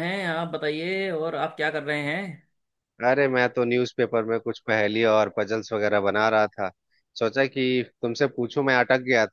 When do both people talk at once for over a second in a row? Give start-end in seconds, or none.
none